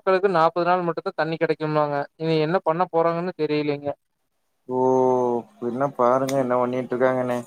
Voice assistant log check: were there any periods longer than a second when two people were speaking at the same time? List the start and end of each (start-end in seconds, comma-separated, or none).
none